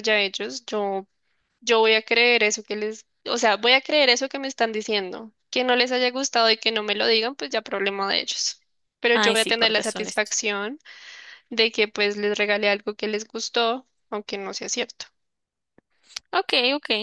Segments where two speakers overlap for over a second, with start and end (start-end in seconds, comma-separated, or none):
9.1-10.4